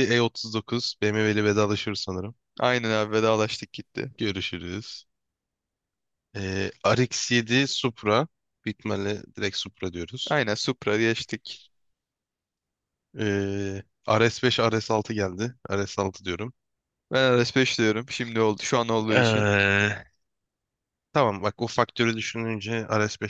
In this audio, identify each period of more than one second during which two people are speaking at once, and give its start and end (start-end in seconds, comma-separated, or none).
none